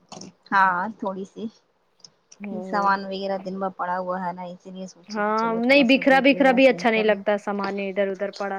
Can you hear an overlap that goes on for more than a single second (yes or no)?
yes